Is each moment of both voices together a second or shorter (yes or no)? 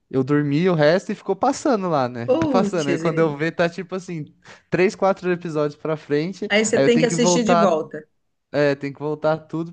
no